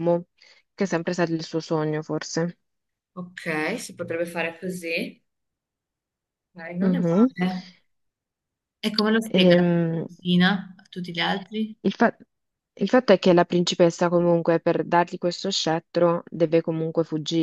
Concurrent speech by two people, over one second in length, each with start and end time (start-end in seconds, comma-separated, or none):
none